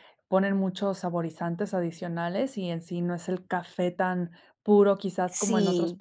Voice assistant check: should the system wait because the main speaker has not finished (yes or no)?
no